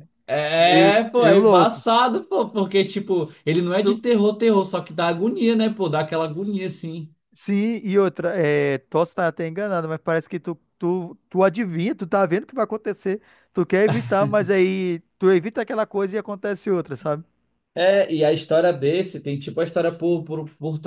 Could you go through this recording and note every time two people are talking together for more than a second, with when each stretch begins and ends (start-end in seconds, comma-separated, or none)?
0.6-1.8